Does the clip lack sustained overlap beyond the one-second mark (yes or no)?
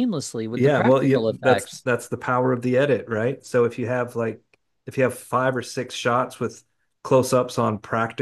no